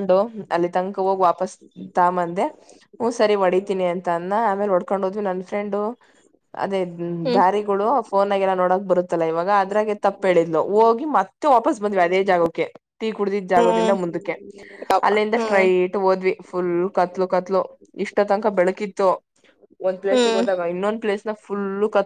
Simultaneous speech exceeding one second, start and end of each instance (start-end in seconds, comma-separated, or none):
none